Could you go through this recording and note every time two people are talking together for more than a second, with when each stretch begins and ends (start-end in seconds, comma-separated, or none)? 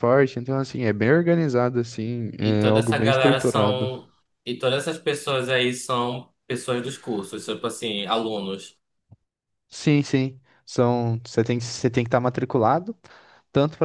2.4-3.9